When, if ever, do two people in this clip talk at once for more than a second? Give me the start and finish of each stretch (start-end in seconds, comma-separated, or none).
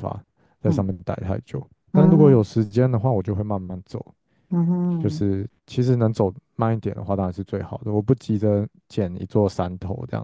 none